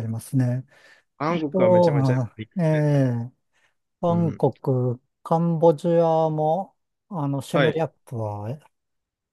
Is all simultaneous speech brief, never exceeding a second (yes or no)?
no